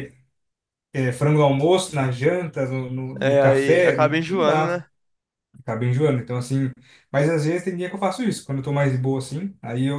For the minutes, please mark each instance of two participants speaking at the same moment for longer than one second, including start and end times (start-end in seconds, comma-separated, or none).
3.2-4.8